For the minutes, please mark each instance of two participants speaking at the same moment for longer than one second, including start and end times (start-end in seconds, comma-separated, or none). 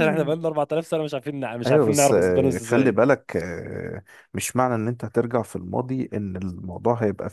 1.7-3.0